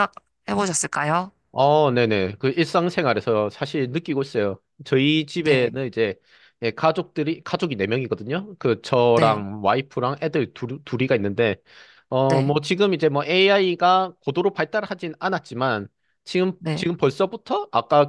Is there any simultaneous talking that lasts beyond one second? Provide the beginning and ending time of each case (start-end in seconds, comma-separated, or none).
none